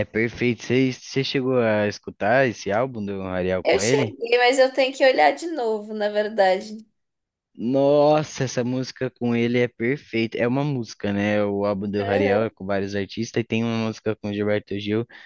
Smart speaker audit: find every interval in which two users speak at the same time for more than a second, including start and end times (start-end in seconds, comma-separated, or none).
none